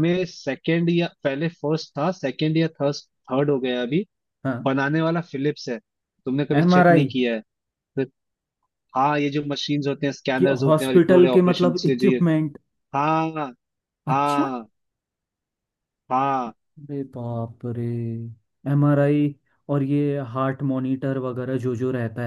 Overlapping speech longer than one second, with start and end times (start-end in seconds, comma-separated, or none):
10.4-12.2